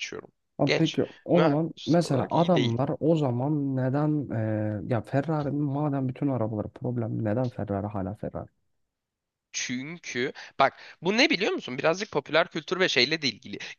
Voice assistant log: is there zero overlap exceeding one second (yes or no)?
no